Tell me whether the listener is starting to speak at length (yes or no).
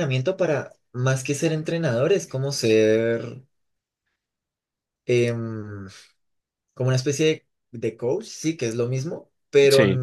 no